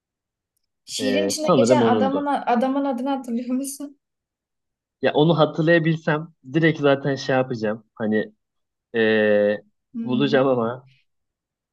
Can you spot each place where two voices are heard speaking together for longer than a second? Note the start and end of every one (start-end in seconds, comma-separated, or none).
1.0-2.3